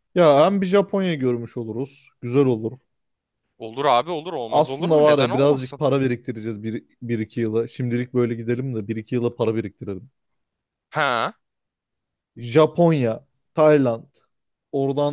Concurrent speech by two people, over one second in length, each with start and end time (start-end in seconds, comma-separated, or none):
4.5-5.8